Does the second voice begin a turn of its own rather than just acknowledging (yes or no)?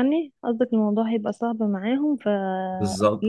yes